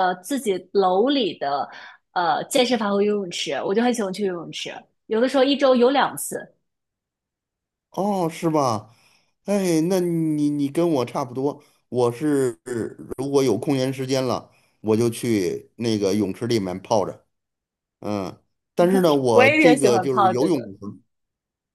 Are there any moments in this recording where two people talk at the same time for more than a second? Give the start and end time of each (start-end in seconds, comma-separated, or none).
19.3-20.6